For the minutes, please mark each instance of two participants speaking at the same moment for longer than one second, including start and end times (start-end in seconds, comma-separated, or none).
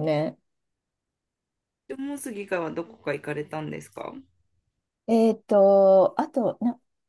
none